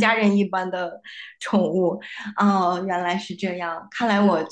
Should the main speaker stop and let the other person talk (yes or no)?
no